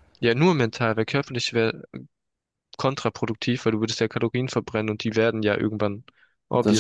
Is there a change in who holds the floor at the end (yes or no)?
no